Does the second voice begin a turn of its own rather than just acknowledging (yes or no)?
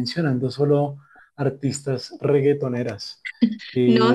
yes